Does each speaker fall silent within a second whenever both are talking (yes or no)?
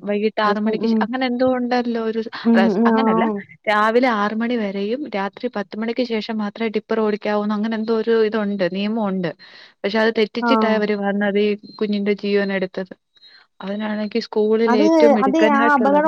yes